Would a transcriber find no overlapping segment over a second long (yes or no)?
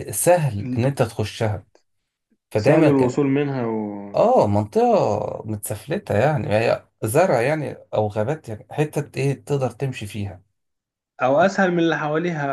yes